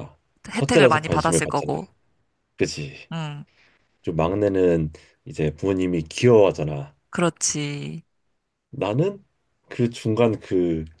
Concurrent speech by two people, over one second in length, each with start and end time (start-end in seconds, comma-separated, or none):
0.5-1.8